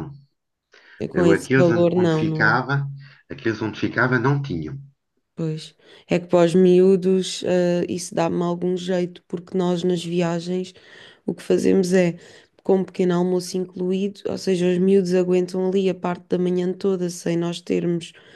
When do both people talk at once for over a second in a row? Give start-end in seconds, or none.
1.1-2.6